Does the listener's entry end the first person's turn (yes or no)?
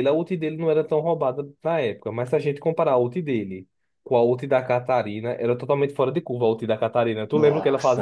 yes